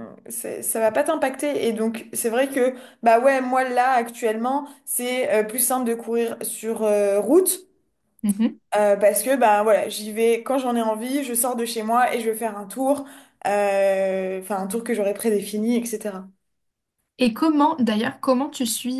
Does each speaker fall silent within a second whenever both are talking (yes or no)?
yes